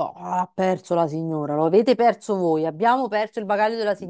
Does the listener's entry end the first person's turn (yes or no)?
no